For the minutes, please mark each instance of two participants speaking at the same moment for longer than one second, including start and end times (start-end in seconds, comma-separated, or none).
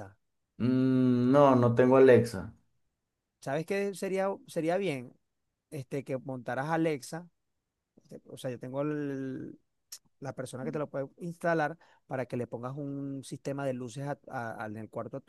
none